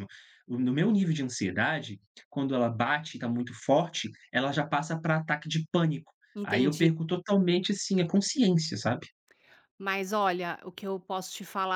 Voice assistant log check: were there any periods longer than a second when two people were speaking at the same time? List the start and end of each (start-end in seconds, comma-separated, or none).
none